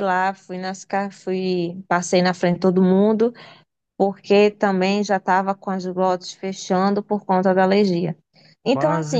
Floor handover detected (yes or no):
yes